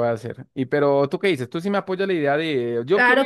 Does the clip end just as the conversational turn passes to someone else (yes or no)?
yes